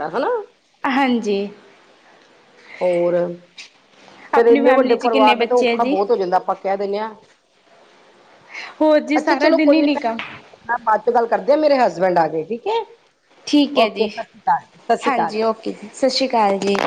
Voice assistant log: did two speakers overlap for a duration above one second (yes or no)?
yes